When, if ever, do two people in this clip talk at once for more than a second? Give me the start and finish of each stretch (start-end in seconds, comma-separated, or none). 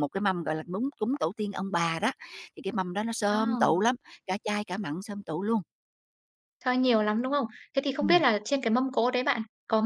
none